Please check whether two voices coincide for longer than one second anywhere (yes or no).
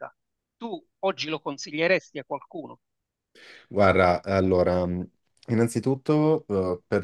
no